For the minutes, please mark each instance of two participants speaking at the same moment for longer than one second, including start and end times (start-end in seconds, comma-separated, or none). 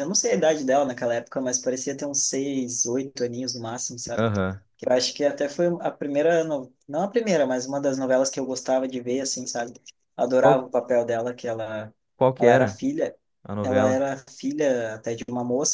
none